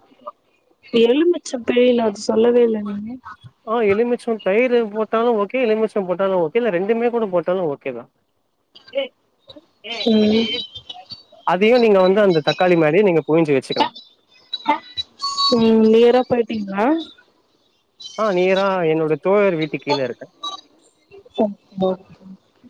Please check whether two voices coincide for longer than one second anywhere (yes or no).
no